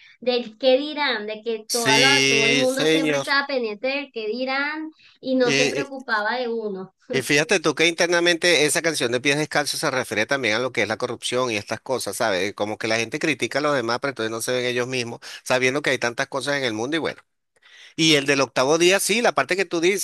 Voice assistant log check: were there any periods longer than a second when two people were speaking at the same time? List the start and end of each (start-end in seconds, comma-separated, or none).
1.7-3.3